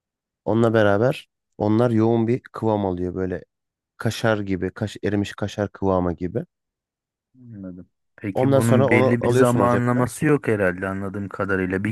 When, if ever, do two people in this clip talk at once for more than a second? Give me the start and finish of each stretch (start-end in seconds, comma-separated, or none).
8.3-10.1